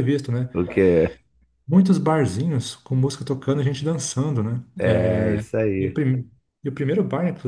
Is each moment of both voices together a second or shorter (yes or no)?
yes